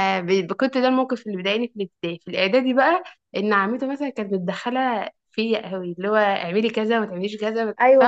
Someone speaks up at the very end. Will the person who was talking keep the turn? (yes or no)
no